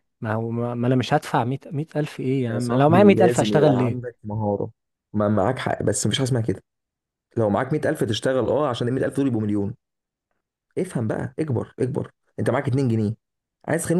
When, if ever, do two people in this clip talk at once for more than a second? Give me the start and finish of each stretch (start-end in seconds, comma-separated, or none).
2.5-4.0